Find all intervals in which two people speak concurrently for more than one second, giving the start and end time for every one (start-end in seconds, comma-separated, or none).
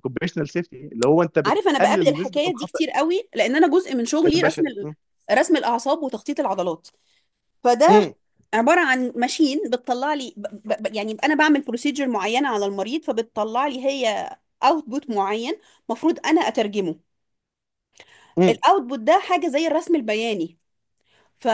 1.4-2.8